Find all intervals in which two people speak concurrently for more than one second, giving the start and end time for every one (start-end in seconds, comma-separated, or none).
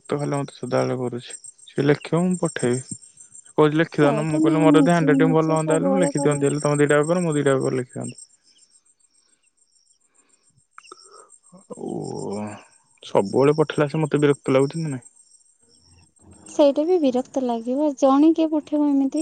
4.1-6.4